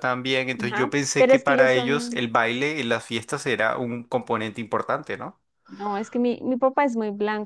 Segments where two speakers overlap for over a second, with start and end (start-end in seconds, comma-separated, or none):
0.6-2.2